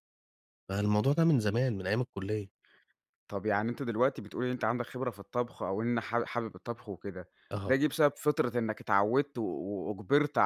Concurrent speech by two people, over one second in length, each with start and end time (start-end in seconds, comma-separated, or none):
none